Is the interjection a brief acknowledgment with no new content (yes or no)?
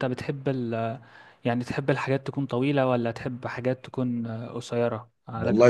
no